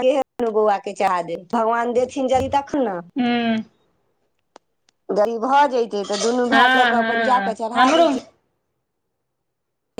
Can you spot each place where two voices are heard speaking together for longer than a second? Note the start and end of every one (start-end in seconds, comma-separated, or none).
6.5-8.1